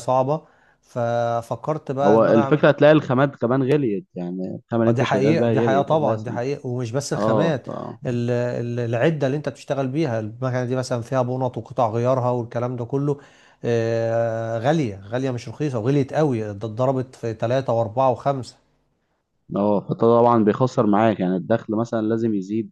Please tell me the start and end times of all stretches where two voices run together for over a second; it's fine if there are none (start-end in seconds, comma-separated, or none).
4.9-6.4